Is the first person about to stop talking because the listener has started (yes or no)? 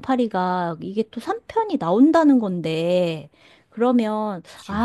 no